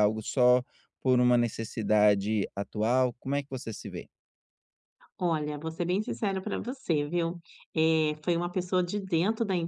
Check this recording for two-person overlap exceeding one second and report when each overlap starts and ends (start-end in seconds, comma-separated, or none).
none